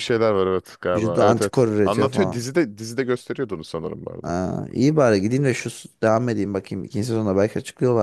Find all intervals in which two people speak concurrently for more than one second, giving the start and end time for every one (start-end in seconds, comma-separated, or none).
0.9-2.4